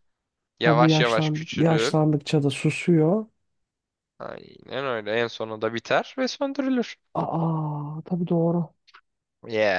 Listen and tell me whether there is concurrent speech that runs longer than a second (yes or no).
yes